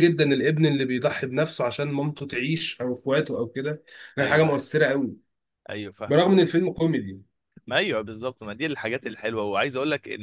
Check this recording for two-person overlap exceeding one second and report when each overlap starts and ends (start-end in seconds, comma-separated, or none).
none